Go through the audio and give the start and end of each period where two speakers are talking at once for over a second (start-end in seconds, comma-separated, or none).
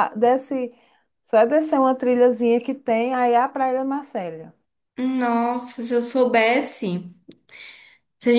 none